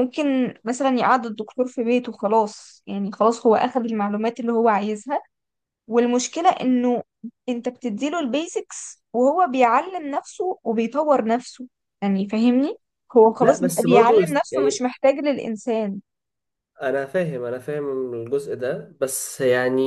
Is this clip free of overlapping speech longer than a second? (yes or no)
no